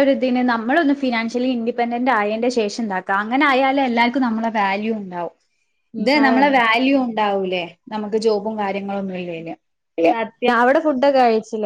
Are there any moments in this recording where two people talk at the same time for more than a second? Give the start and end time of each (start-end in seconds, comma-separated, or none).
none